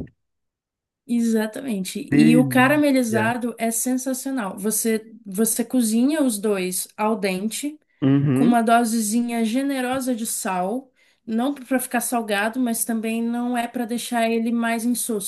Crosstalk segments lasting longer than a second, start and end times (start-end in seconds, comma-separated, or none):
2.1-3.3